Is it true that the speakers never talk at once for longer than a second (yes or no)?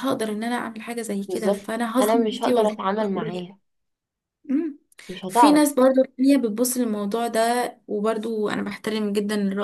no